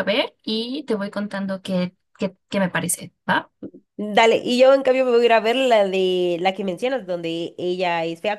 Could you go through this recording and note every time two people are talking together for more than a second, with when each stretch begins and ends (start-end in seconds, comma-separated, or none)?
none